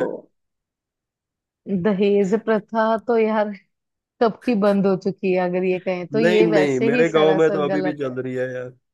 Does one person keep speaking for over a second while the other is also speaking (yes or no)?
yes